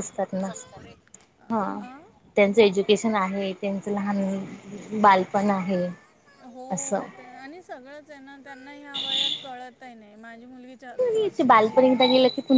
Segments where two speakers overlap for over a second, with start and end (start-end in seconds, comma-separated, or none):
none